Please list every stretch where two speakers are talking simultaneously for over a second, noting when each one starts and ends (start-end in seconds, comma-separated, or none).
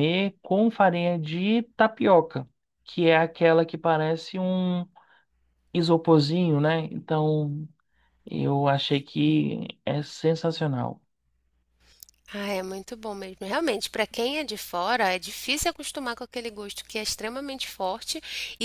none